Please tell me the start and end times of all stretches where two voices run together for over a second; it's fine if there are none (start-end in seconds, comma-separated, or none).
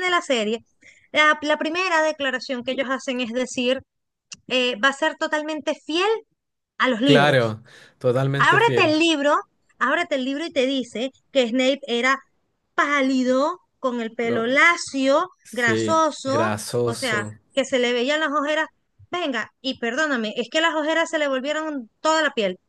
15.4-17.4